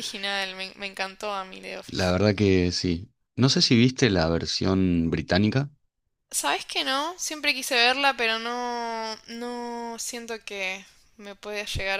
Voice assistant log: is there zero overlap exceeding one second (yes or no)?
yes